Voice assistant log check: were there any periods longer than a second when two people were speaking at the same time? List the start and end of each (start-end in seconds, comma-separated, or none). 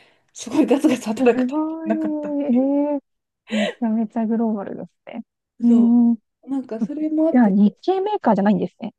1.2-2.8